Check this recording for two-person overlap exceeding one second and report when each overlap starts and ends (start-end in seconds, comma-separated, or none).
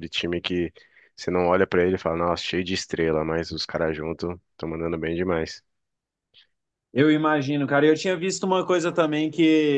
none